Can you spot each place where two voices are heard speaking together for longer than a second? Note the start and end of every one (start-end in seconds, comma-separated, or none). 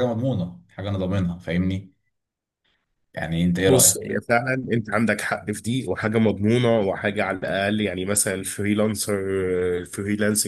none